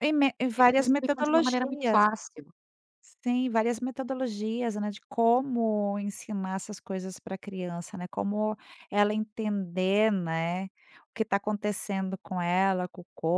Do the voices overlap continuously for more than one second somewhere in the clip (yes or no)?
yes